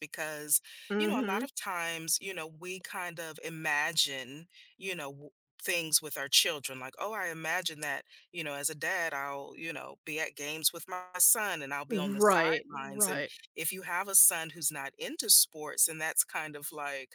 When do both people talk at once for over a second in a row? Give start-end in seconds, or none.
11.9-13.3